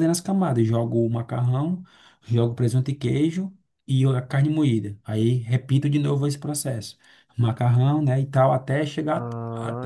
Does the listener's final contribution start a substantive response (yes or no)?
no